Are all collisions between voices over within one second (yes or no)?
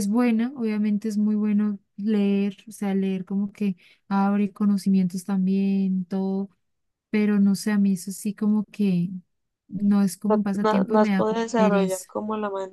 no